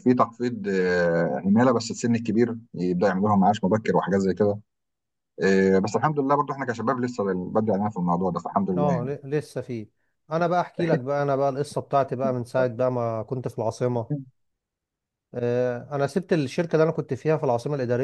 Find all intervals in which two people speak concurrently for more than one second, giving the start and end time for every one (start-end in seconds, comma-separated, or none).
none